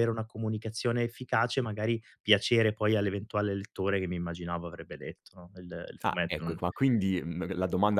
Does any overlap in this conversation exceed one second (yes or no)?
no